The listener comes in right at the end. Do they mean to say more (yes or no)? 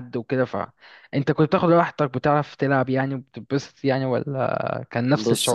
yes